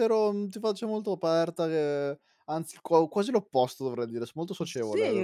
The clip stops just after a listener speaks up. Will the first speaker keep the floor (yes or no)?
no